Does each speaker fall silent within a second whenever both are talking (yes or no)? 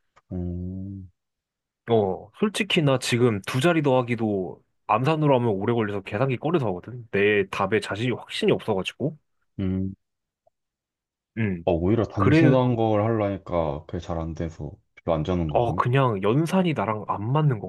yes